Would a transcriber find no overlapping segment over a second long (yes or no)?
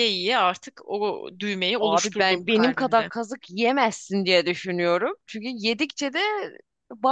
no